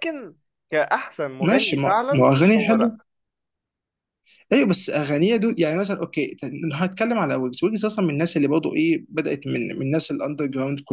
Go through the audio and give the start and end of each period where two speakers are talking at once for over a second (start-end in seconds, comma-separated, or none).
1.4-3.0